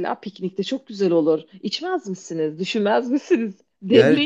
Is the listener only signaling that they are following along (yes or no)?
no